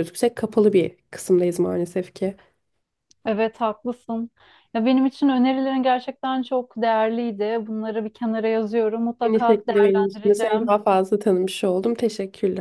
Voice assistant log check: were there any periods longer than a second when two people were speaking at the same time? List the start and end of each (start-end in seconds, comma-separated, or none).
9.3-10.8